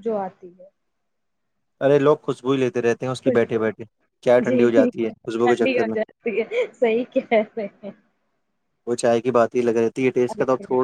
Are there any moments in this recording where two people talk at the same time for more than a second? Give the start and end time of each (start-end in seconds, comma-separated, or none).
none